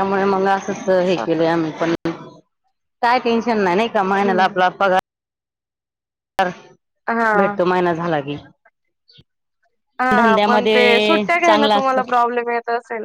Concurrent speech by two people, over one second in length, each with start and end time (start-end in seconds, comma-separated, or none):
10.2-12.1